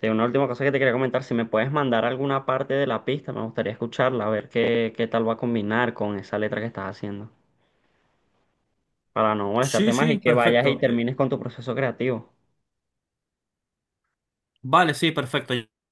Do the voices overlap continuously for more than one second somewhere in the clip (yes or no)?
yes